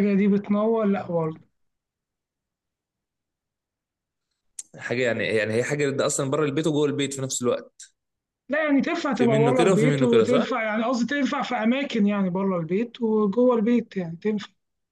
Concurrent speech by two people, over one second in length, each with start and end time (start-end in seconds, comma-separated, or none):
9.2-10.4